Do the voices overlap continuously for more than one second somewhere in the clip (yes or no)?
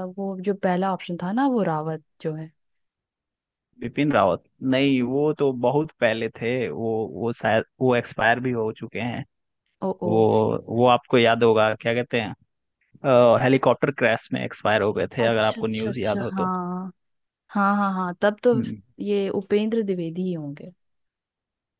yes